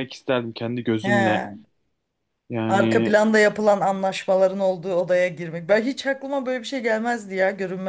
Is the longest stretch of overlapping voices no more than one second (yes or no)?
yes